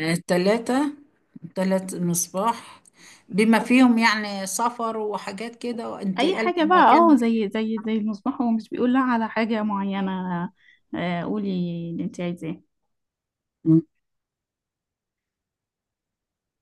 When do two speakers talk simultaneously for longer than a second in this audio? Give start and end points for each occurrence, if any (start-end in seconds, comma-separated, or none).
6.2-7.5